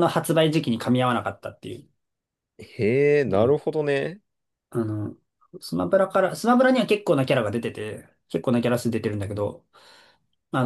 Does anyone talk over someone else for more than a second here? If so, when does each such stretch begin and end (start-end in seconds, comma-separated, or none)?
none